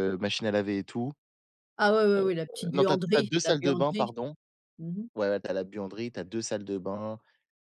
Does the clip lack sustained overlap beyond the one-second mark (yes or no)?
no